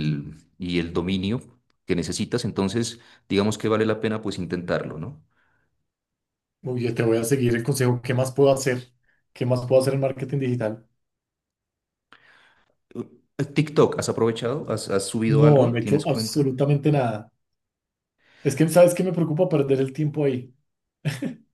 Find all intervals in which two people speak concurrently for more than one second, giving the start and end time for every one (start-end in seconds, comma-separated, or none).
15.2-16.5